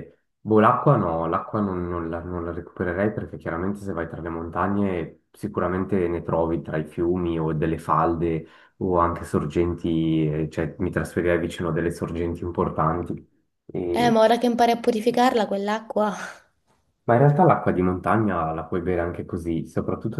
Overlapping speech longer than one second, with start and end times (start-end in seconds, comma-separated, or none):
none